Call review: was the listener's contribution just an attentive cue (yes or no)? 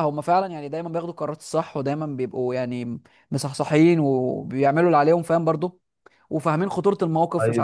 yes